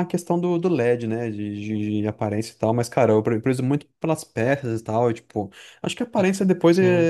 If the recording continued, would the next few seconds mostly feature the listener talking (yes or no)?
no